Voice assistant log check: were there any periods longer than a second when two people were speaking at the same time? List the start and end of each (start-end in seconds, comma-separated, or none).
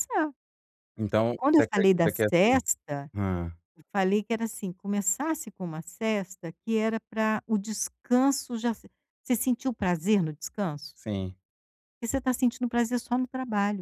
1.4-2.6